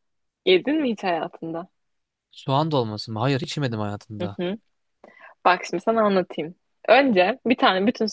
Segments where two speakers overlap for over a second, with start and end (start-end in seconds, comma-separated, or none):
none